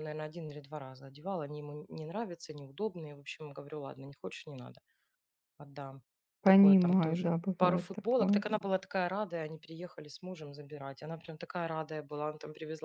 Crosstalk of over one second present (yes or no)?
yes